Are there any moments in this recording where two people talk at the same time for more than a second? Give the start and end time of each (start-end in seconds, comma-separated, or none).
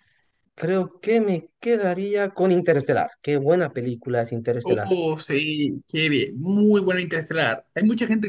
none